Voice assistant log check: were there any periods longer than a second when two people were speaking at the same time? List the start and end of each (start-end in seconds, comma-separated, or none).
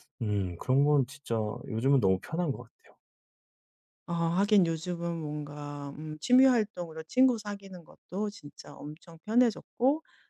none